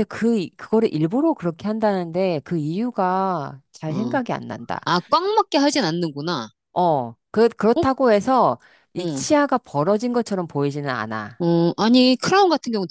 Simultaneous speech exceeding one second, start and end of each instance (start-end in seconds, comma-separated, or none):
none